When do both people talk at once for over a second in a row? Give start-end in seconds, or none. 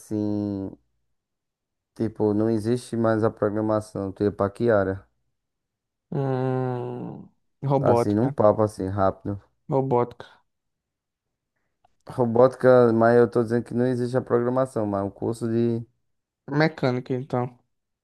none